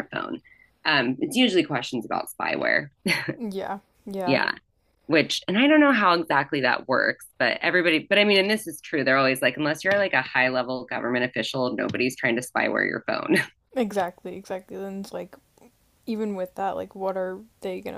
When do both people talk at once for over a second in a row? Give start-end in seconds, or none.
none